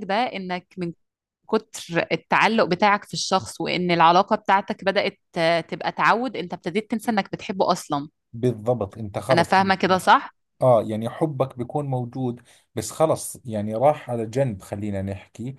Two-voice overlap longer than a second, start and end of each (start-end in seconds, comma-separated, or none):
none